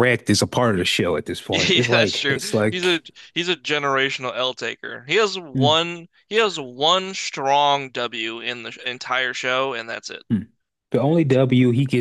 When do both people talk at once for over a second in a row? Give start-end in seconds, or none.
1.5-3.0